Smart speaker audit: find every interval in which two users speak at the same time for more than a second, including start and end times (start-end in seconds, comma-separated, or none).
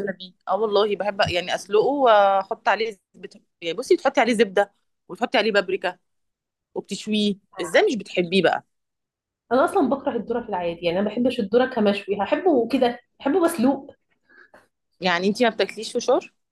none